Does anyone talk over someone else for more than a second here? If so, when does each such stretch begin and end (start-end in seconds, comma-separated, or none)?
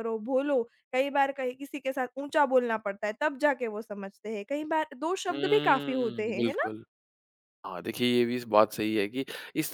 5.3-6.7